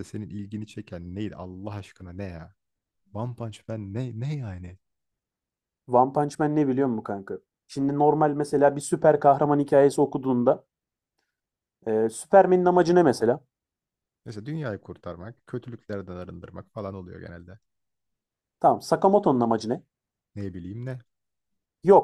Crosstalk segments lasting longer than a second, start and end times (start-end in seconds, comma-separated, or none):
none